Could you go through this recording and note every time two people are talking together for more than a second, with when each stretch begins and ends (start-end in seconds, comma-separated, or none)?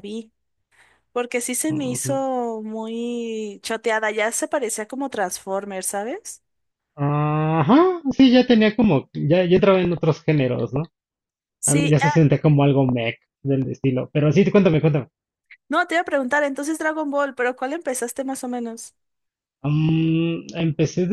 none